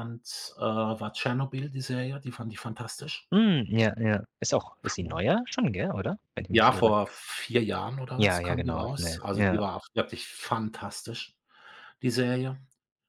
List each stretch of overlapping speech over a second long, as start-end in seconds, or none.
8.2-9.6